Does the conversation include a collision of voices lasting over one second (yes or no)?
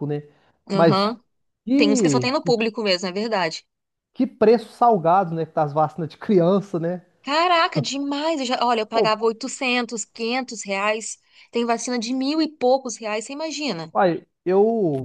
no